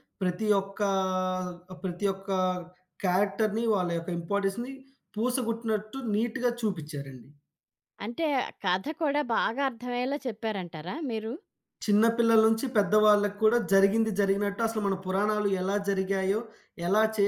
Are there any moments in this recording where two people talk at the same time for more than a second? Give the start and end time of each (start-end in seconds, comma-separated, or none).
none